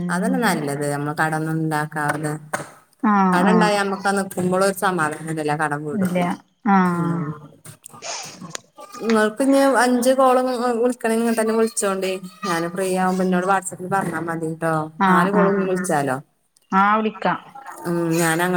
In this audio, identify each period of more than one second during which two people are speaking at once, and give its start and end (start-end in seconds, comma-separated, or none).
none